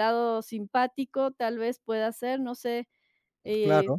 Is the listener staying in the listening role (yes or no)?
no